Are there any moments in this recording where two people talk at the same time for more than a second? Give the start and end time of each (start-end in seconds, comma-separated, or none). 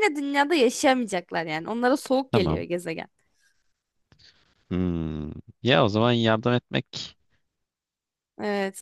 none